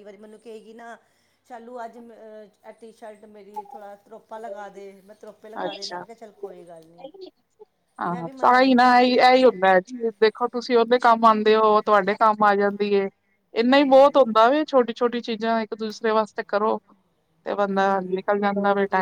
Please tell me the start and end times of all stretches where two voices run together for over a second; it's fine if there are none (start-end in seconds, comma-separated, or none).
8.1-9.4